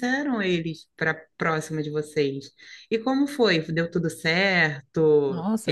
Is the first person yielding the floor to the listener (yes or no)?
yes